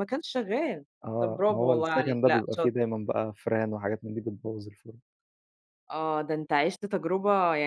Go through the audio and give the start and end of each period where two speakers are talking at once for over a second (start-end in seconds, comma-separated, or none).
1.0-2.7